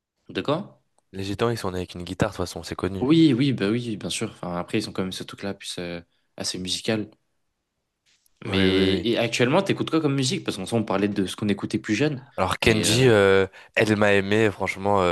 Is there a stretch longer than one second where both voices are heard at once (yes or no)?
no